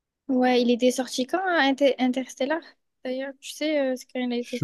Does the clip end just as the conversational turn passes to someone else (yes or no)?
yes